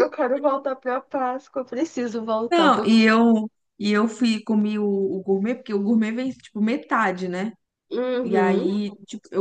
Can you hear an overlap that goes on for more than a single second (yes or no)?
no